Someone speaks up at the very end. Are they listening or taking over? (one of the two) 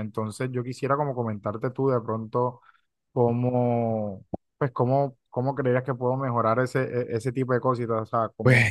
listening